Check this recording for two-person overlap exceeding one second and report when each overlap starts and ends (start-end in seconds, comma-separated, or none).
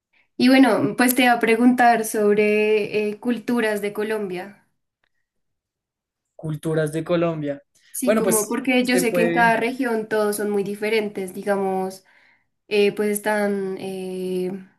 8.1-9.6